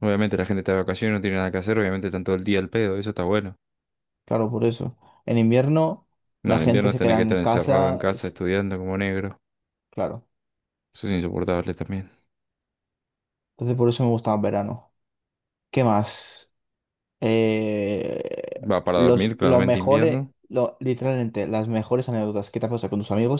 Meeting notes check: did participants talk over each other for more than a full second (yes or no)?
yes